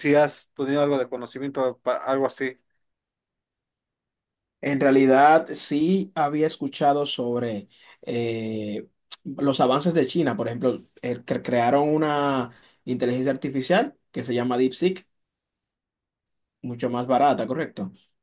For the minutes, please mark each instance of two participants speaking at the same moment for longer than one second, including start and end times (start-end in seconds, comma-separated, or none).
none